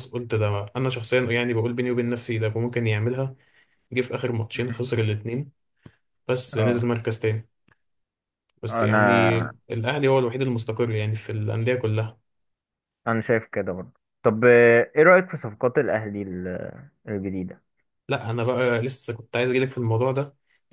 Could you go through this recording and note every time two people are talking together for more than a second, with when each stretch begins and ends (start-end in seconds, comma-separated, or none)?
none